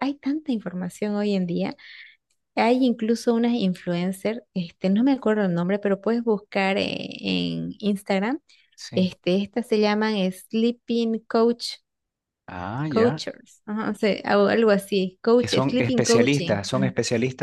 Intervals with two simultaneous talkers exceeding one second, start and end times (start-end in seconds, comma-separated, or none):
15.4-16.9